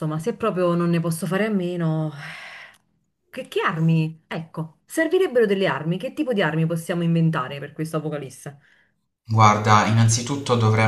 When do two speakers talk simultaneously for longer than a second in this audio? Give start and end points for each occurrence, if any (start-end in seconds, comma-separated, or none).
none